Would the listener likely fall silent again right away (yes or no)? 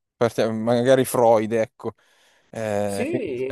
no